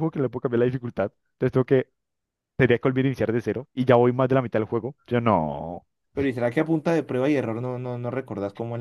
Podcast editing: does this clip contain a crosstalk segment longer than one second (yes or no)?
no